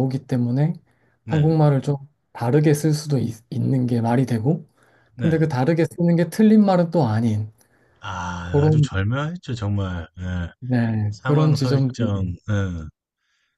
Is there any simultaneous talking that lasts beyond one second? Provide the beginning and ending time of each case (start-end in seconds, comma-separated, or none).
11.1-12.3